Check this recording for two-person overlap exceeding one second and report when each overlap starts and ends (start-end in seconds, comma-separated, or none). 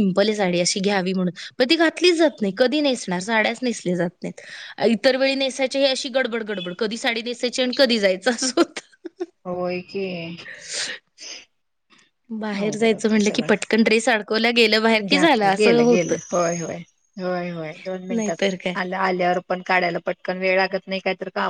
none